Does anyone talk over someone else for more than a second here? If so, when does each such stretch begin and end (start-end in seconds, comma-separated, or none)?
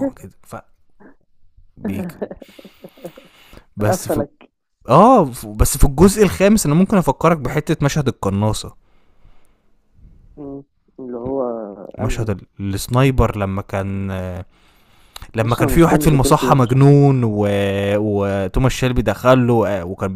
15.4-16.8